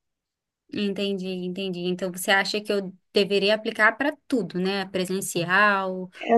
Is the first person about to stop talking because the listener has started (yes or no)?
yes